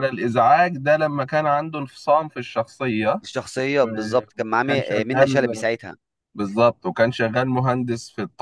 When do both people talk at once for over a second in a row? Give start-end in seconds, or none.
3.8-5.7